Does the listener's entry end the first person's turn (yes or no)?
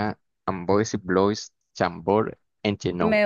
yes